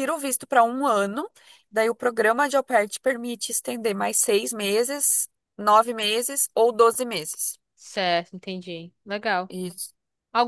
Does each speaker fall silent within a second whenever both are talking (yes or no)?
yes